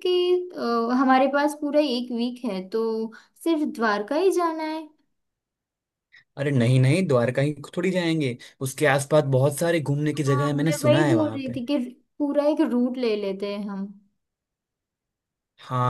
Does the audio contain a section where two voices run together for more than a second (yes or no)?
yes